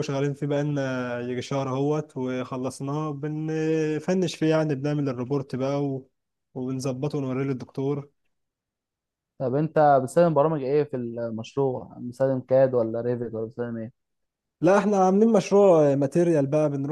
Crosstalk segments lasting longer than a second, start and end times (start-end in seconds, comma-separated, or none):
none